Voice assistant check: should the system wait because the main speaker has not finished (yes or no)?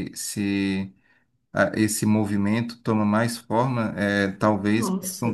yes